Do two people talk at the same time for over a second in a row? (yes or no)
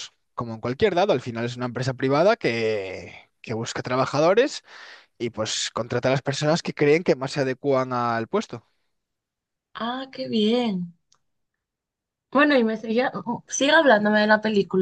no